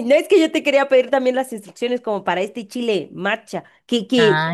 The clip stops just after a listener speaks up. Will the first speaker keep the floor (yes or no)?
yes